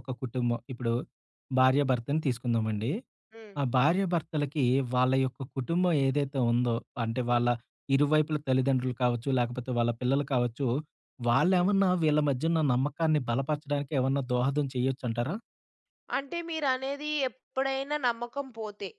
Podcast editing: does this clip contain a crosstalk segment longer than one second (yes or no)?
no